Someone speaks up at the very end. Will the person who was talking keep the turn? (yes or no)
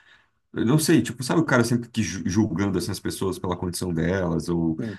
yes